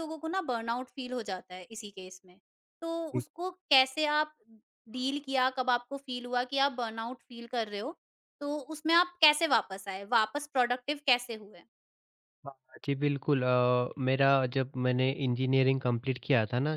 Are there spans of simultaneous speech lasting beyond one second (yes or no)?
no